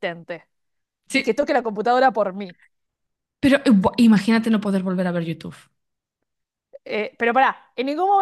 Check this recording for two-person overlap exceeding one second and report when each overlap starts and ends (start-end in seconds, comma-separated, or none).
none